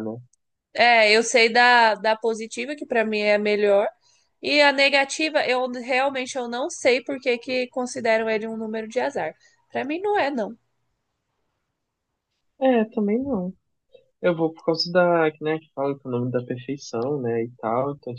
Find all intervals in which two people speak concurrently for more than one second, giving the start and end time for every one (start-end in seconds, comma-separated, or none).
none